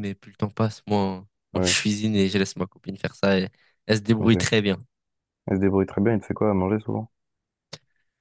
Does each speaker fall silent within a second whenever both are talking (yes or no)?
yes